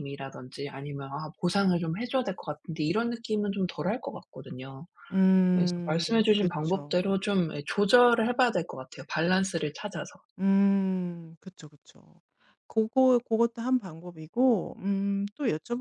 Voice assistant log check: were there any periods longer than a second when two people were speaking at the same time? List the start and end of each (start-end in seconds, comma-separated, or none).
5.5-7.2